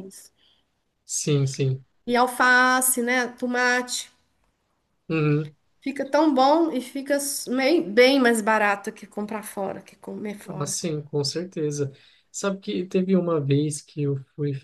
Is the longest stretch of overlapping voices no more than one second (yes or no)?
yes